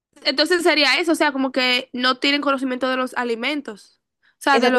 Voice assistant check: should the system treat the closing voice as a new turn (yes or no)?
yes